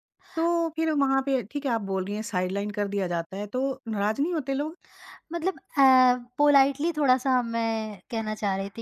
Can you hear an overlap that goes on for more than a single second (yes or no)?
no